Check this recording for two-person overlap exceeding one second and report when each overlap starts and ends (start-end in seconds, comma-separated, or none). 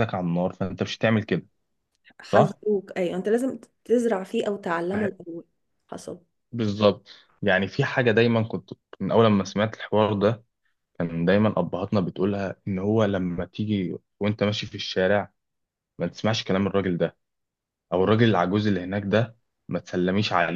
none